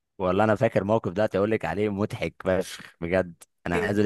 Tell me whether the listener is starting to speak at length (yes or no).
no